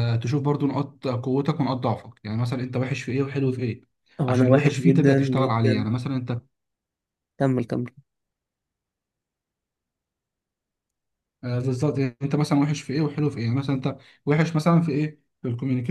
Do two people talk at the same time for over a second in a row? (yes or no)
yes